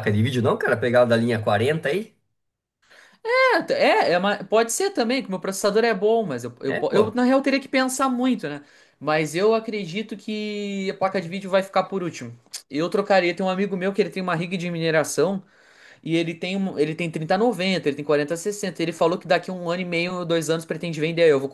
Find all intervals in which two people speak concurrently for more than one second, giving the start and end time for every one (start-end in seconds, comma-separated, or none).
none